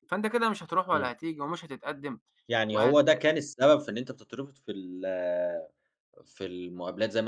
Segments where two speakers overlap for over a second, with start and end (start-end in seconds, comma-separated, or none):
none